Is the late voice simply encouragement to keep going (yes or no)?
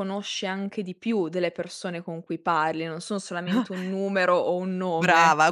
no